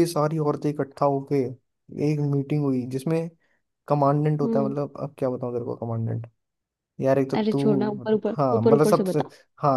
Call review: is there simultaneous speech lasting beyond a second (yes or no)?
yes